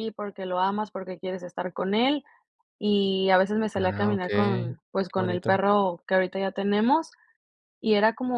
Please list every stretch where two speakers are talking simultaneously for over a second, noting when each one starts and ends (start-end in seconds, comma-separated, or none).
3.8-5.6